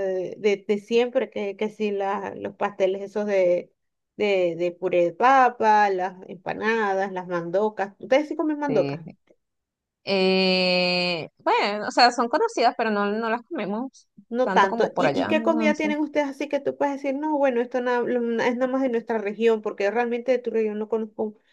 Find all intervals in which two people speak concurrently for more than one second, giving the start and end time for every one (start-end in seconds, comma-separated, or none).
14.4-15.9